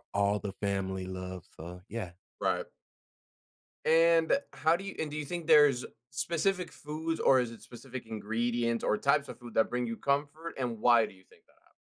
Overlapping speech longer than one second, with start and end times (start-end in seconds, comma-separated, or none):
none